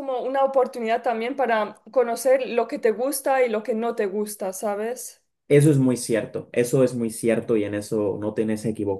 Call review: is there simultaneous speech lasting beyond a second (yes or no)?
no